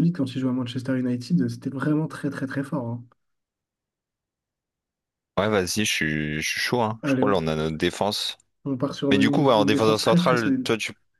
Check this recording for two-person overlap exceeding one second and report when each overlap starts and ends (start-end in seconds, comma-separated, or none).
9.1-10.7